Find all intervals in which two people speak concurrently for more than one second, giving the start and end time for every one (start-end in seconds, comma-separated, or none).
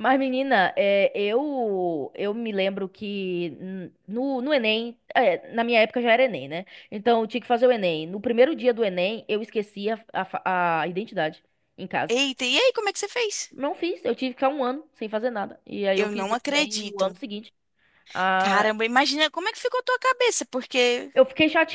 15.9-17.2